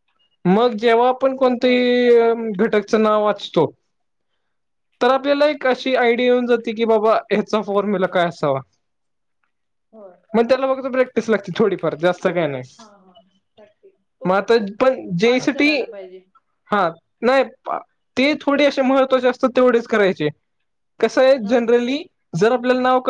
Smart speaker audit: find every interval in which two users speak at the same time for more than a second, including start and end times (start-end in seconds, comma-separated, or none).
none